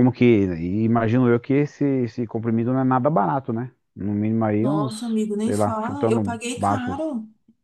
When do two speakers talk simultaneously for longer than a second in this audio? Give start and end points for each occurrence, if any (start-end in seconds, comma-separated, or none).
4.6-7.0